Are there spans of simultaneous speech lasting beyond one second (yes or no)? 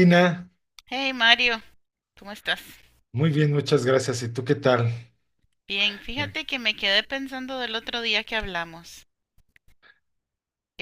no